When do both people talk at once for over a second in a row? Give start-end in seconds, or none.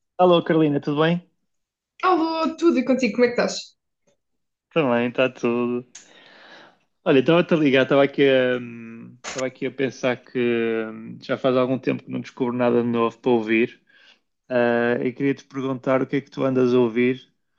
none